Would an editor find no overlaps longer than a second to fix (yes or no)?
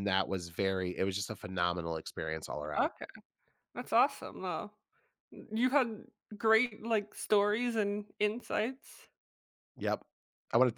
yes